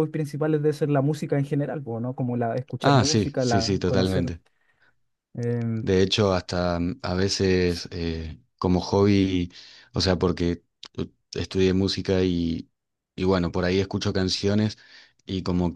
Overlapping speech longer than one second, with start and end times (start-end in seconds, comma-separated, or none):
2.8-4.3